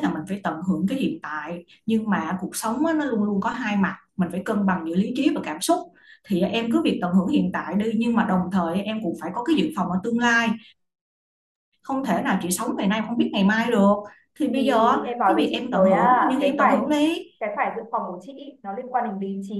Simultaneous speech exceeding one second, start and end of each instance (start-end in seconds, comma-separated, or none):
14.5-16.9